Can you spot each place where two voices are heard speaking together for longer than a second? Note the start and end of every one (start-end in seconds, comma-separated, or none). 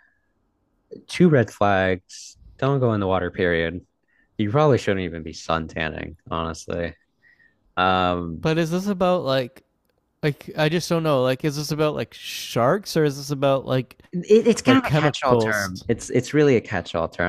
14.6-15.8